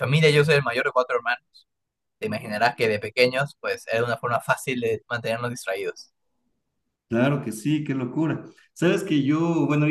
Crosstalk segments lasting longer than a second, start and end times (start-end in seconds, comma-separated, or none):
none